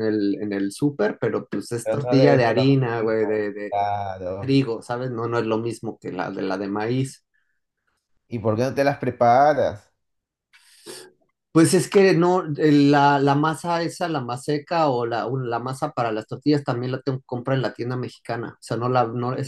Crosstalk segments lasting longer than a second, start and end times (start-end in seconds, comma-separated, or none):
1.8-3.7